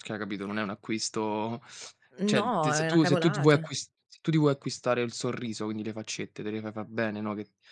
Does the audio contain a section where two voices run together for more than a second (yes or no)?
yes